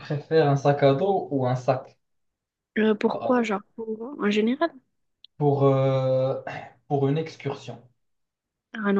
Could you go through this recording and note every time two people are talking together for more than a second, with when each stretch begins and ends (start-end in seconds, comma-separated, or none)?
none